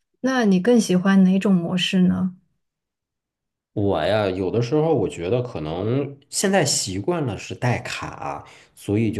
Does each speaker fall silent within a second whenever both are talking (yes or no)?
yes